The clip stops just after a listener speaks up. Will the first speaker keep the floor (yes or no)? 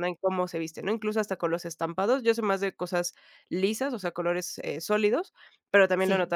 yes